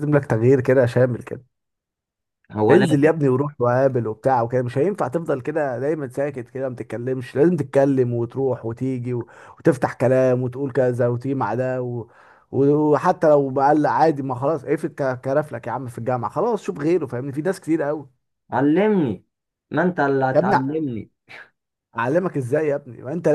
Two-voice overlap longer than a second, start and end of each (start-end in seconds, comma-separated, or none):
none